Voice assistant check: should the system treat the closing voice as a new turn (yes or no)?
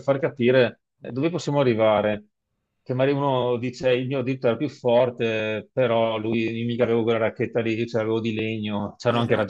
yes